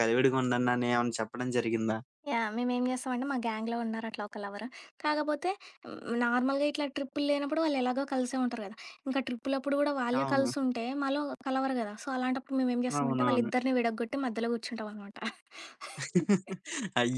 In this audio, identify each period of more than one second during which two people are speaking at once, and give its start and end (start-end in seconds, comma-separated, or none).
none